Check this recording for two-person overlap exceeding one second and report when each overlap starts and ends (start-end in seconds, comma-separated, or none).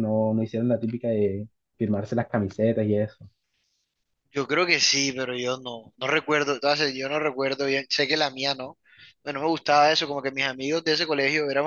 none